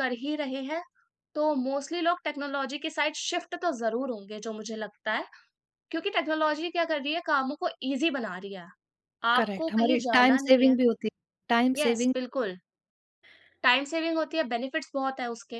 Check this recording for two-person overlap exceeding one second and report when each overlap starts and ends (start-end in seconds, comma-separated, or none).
9.4-10.7